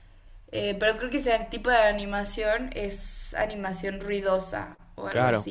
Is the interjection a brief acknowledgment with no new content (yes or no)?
no